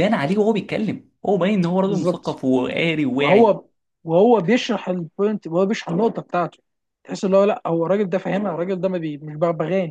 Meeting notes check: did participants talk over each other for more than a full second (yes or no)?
no